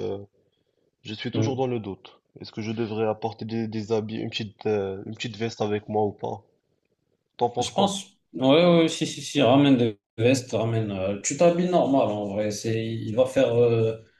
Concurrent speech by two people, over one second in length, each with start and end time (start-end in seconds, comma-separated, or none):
none